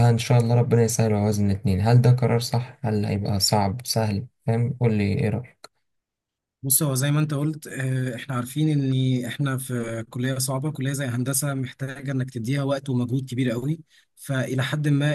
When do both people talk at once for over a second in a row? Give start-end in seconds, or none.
none